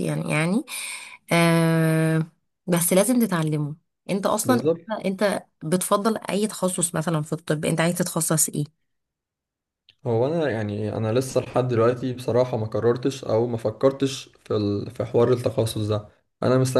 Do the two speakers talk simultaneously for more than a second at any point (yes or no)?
no